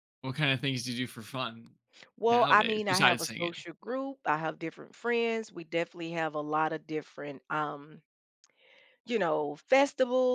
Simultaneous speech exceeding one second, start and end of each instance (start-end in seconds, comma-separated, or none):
2.3-3.5